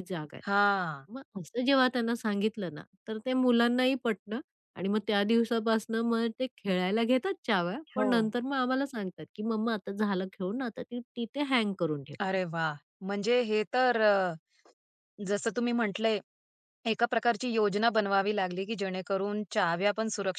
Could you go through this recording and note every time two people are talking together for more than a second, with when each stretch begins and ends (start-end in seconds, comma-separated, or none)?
none